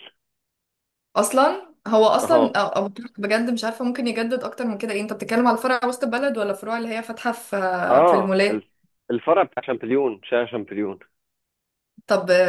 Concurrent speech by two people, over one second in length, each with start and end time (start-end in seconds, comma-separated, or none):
none